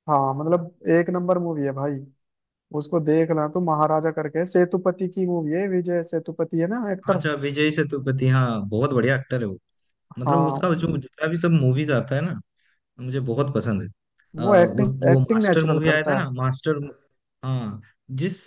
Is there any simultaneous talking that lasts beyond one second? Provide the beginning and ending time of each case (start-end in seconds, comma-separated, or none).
14.4-16.2